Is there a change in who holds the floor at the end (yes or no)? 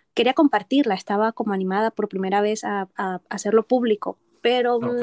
no